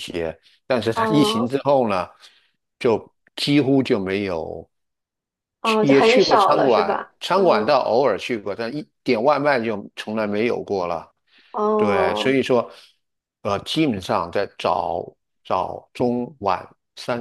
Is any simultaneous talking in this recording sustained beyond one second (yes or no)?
yes